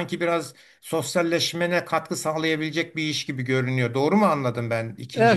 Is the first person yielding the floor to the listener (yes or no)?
yes